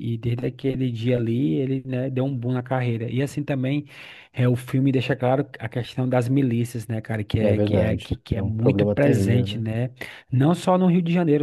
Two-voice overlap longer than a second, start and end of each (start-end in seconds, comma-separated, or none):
7.4-9.7